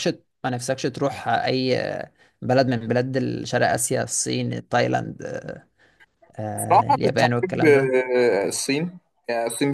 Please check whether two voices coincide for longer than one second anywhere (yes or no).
yes